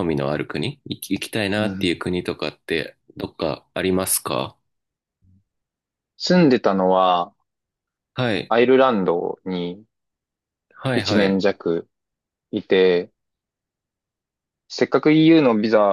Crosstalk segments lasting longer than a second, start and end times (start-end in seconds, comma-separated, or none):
none